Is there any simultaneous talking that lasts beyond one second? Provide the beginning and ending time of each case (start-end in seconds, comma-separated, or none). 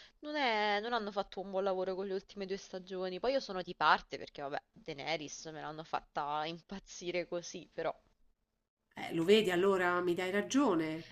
none